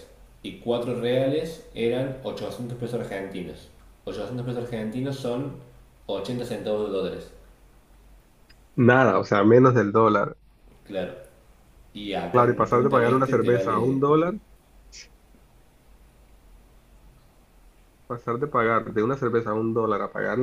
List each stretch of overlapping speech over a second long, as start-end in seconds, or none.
12.3-14.0